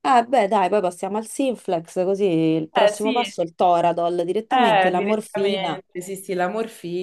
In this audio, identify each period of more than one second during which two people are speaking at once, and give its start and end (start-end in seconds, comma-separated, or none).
4.5-5.8